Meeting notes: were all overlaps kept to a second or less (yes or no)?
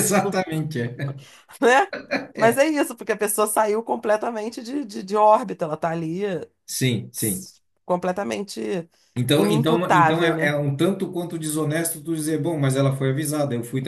no